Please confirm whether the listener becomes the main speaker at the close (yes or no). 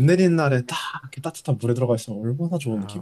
yes